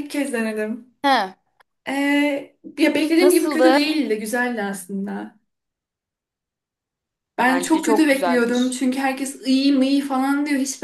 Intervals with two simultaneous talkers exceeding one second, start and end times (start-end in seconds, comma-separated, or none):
7.5-8.8